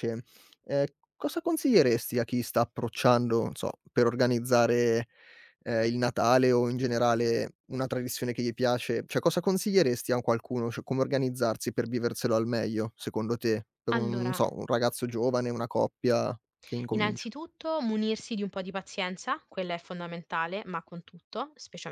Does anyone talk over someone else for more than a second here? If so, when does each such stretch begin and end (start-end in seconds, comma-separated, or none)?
none